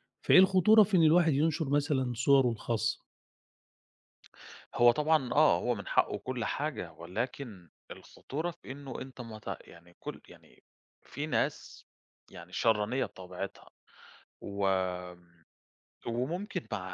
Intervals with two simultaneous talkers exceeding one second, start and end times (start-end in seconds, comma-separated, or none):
none